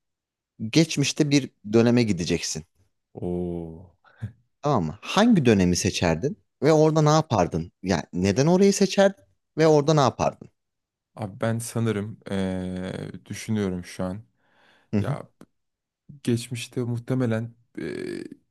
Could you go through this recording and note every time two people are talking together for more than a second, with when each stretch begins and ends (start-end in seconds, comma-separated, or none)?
none